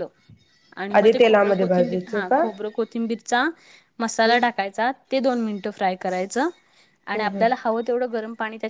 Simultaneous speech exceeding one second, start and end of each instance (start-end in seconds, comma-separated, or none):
1.0-2.4